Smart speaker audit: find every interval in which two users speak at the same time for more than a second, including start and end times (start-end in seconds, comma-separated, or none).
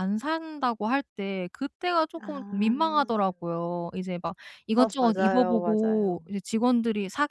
4.7-6.2